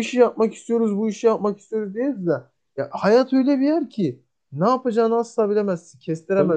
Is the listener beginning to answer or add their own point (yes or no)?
yes